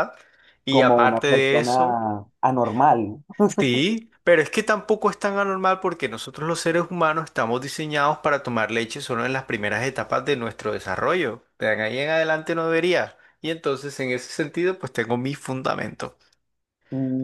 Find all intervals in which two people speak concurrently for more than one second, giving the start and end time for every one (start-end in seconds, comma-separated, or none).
0.7-2.0